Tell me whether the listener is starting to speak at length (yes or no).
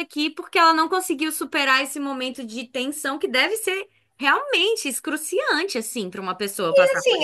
yes